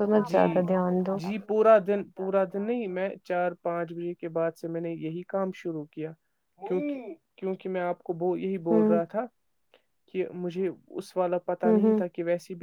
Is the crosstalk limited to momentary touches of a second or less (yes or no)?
yes